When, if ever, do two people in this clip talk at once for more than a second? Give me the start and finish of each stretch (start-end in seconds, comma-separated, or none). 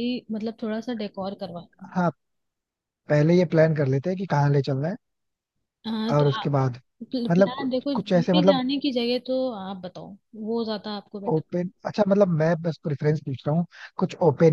7.3-8.6